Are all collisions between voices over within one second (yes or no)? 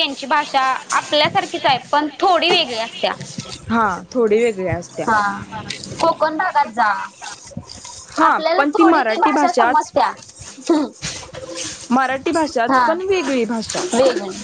no